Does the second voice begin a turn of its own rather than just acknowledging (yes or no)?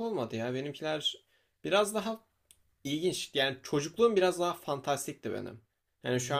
no